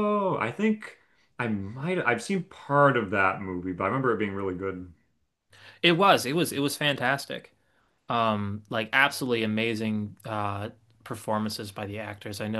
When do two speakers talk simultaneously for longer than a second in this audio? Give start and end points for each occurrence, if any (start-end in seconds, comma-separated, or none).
none